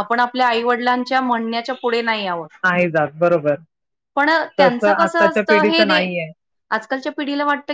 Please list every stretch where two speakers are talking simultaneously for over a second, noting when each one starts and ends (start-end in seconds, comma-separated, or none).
4.6-6.1